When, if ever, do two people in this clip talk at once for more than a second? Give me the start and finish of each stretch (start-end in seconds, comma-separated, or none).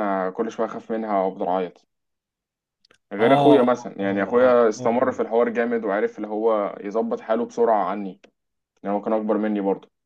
3.2-5.2